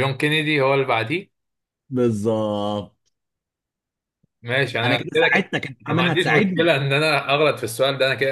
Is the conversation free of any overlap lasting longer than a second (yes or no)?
no